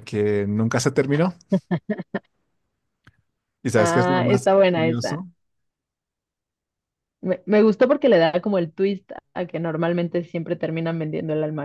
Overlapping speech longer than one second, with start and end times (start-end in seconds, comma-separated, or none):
3.7-5.2